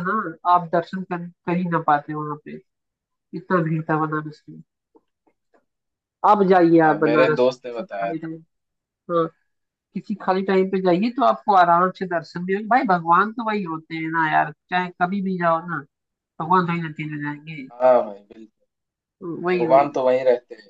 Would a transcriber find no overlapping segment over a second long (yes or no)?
no